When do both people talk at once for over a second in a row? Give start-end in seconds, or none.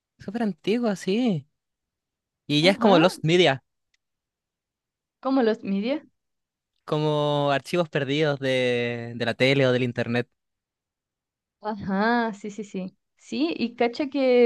none